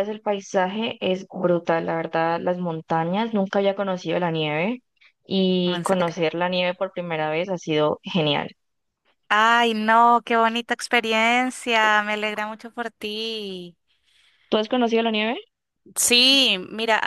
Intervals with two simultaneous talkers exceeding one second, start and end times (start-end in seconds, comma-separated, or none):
none